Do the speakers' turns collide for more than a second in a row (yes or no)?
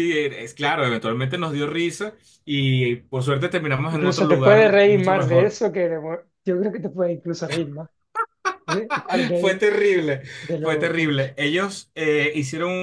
yes